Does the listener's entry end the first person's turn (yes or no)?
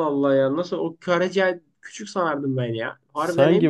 yes